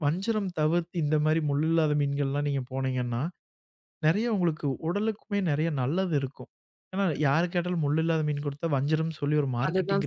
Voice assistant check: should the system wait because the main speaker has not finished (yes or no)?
no